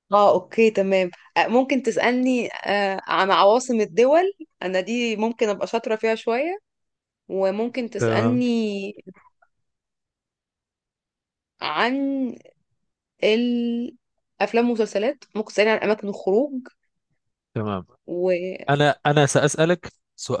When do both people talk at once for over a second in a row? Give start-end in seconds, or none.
none